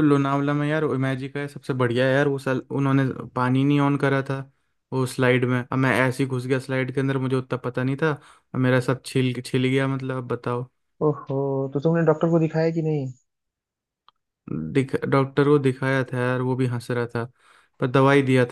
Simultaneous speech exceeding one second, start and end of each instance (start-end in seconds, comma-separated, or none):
none